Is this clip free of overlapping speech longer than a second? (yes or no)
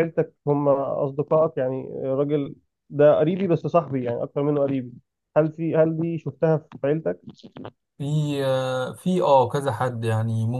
yes